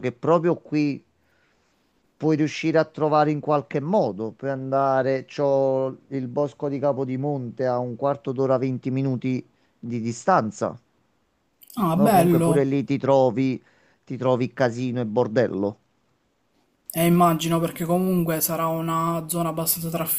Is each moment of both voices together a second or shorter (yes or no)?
yes